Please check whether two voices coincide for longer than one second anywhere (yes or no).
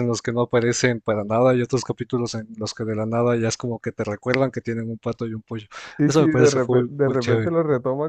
yes